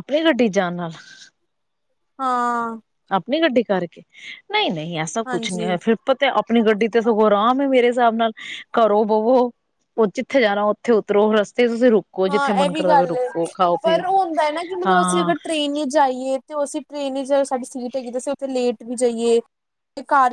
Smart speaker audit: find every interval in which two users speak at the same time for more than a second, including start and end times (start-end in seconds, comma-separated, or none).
12.3-14.0